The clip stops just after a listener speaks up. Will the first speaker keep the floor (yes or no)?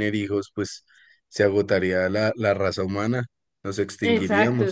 no